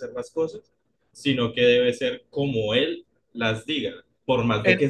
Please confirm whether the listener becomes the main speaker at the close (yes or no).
no